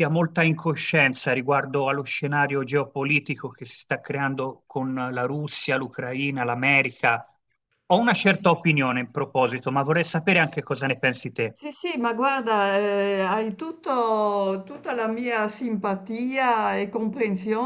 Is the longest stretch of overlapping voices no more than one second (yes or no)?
yes